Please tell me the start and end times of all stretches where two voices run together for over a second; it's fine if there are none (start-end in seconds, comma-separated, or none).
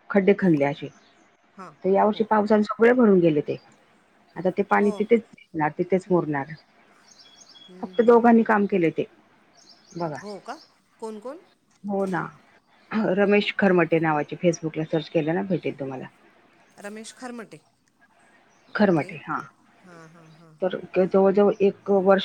none